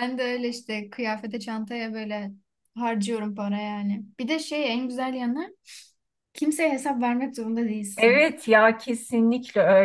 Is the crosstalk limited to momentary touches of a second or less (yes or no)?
yes